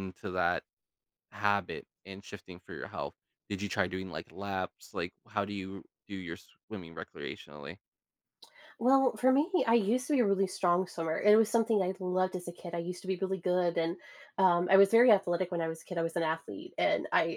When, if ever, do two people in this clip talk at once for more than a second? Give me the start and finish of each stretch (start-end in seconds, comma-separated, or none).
none